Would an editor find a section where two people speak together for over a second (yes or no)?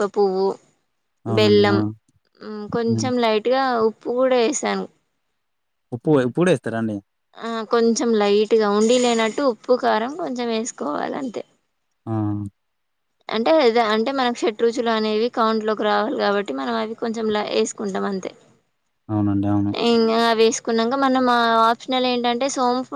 no